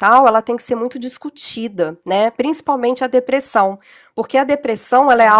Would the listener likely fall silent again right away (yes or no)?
yes